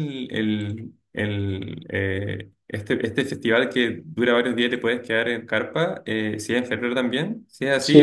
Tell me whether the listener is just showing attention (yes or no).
no